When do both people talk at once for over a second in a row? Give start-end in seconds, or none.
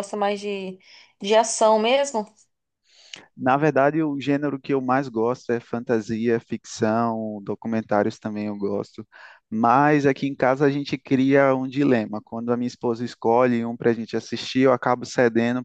none